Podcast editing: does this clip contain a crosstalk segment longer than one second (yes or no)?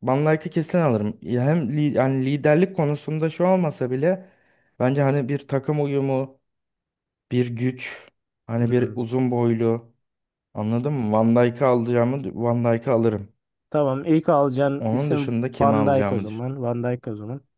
yes